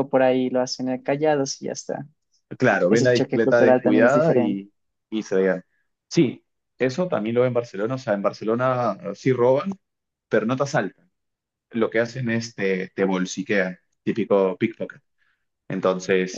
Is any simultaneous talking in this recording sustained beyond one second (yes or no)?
yes